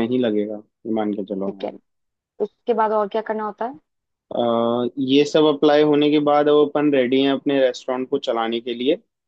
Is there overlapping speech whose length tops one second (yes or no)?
no